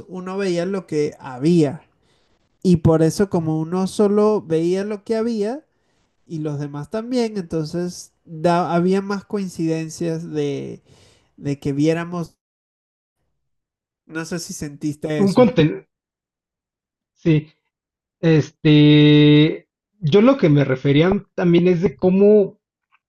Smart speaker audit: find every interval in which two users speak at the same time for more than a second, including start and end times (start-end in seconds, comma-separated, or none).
none